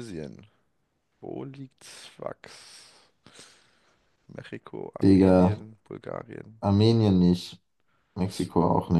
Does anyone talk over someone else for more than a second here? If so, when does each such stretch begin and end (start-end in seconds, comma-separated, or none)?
none